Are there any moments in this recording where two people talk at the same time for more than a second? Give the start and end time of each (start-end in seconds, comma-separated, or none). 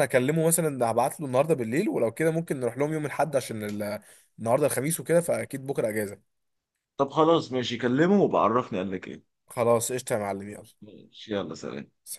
none